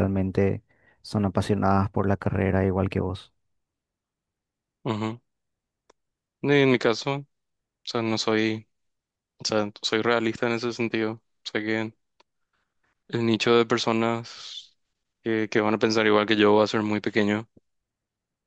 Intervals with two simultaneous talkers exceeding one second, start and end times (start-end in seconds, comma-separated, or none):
none